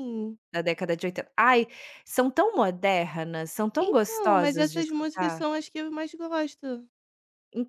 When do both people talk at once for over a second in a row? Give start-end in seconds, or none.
3.8-5.4